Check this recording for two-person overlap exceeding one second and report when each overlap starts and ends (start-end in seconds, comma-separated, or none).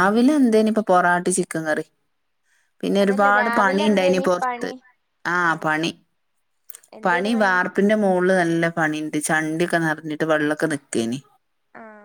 3.0-4.7